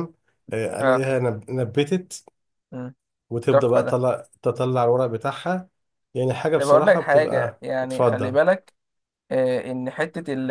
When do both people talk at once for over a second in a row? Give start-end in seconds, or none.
6.6-8.3